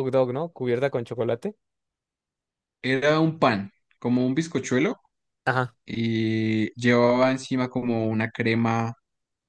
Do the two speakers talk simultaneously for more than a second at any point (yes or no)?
no